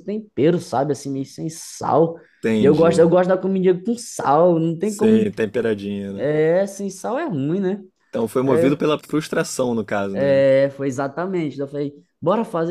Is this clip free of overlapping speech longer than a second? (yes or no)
yes